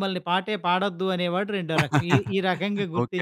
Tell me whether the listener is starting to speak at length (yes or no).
yes